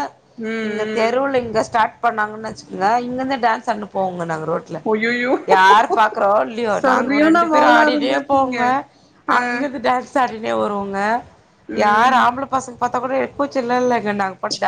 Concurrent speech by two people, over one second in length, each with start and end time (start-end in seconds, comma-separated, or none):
6.8-8.6